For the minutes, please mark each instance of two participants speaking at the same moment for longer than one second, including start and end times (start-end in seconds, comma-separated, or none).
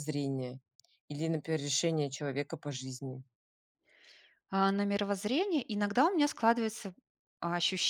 none